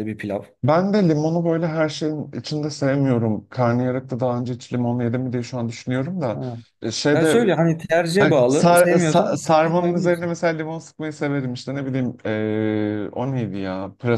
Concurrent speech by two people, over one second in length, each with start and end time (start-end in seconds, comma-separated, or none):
8.2-10.3